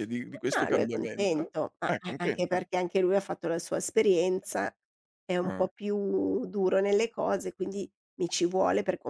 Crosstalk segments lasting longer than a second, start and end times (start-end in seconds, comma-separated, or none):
0.6-2.6